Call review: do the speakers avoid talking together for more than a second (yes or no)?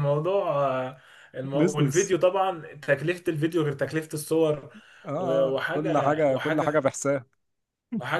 no